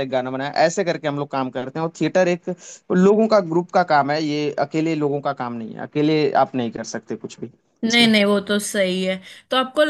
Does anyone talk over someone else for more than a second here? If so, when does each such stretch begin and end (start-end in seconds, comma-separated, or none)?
none